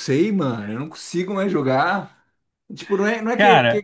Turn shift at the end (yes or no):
no